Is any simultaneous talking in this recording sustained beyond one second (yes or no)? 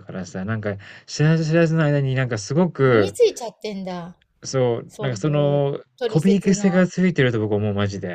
yes